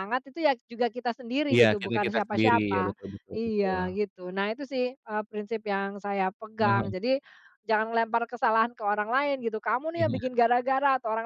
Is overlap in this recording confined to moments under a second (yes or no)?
no